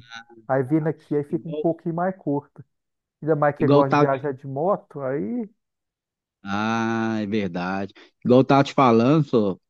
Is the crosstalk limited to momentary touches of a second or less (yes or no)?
yes